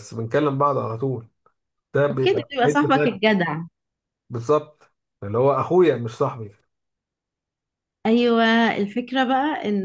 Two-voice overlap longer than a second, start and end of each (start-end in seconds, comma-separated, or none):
2.1-3.3